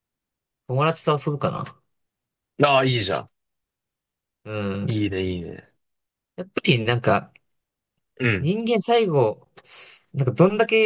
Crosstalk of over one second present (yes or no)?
no